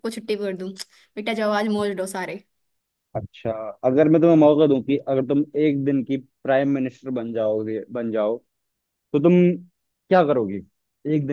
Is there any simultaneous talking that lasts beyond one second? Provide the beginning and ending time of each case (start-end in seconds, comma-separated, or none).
none